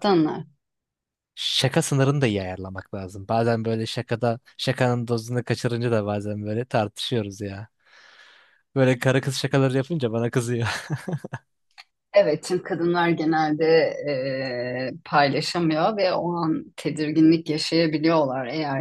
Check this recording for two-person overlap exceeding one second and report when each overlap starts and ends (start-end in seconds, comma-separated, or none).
none